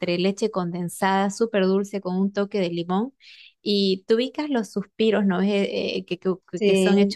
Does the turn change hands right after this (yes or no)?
no